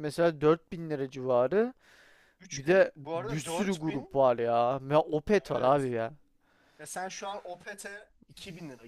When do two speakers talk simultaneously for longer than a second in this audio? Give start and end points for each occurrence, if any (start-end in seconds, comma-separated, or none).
2.5-4.2